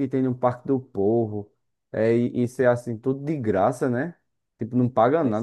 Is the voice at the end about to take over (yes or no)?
no